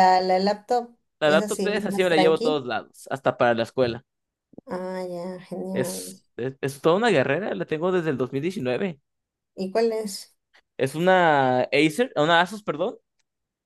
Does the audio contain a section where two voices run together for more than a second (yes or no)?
yes